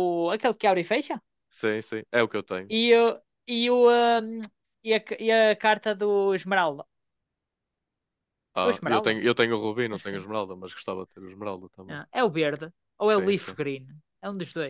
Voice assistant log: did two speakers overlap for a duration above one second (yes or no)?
no